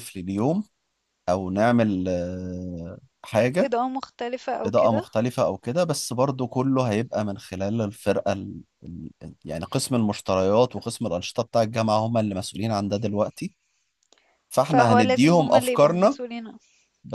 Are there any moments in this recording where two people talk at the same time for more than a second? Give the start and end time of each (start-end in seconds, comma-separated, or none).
14.7-16.2